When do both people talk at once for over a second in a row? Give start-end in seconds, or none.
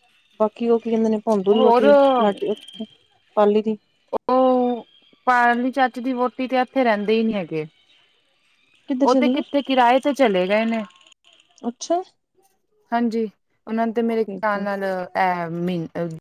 none